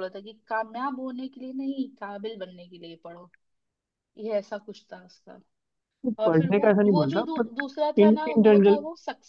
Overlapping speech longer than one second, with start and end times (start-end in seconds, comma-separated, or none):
6.2-8.8